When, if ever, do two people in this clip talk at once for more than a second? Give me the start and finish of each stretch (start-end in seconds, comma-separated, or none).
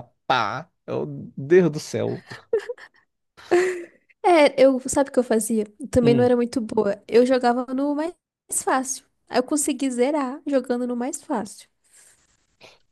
none